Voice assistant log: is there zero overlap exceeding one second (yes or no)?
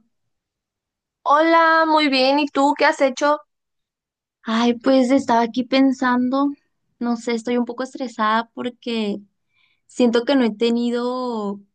yes